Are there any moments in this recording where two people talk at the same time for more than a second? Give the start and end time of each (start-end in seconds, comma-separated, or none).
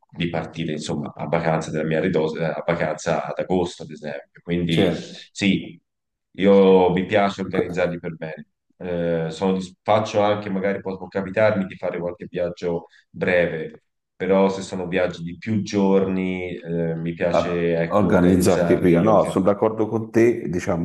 17.3-19.3